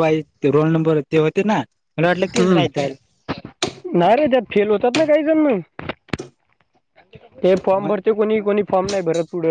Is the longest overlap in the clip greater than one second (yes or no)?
no